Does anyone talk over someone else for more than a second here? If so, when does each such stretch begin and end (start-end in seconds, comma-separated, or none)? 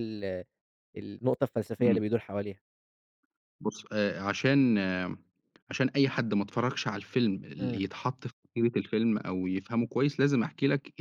none